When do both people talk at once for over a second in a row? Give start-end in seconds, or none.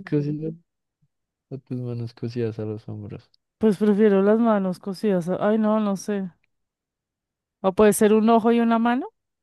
none